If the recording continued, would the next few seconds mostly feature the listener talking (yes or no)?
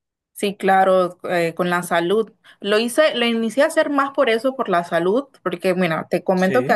no